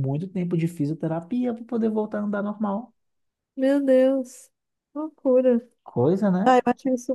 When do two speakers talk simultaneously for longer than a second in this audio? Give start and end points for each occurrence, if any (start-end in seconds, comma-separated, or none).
none